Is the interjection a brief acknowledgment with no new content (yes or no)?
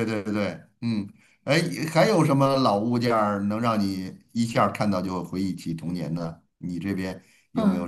no